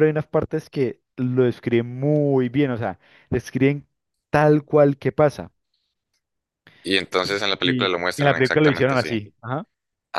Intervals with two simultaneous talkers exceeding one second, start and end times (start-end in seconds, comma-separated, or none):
7.2-9.1